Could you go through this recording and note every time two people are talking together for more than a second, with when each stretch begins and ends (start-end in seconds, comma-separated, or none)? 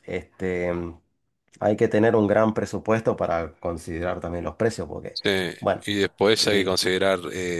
none